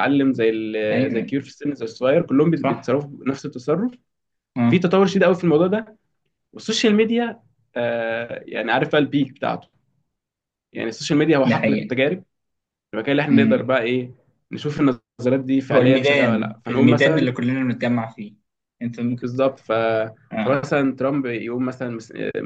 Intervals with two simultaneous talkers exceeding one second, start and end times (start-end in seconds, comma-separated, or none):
15.7-17.3